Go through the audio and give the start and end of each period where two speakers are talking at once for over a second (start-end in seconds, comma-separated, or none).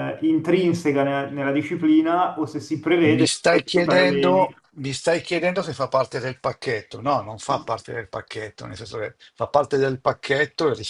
3.1-4.5